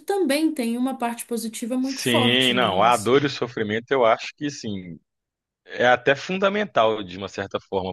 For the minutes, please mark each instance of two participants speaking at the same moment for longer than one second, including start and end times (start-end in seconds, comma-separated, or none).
1.8-3.1